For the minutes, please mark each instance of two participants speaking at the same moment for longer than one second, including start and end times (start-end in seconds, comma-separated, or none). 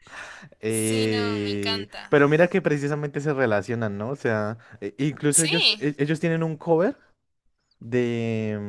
0.7-2.1